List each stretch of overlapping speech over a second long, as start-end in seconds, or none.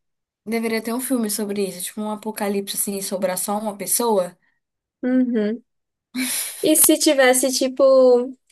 none